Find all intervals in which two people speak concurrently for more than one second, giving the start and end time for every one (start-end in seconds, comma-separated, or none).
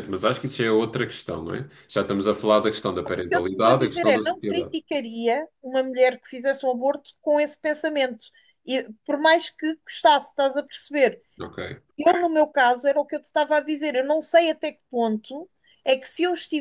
3.0-4.8